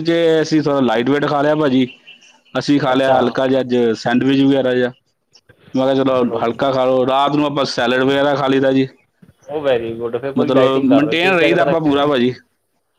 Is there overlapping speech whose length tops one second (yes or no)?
yes